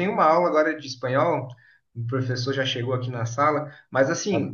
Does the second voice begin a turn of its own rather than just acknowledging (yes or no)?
no